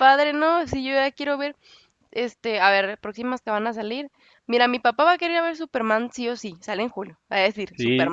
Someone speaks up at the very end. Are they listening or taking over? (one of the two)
taking over